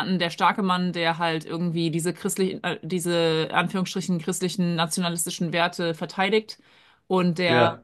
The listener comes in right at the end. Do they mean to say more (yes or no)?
no